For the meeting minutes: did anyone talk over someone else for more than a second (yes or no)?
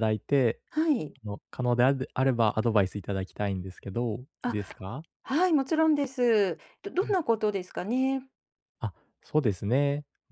no